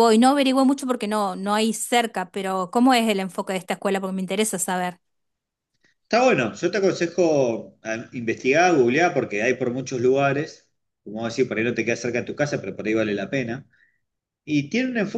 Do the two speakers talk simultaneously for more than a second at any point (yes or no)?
no